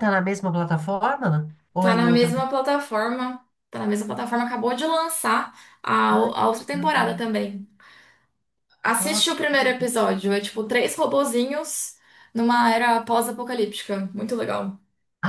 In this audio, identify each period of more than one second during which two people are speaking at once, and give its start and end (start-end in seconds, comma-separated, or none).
none